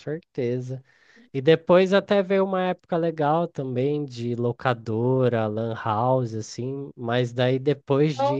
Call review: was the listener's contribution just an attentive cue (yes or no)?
yes